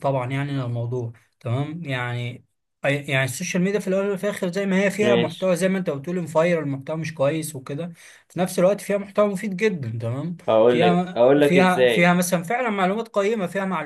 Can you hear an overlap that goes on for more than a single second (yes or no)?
yes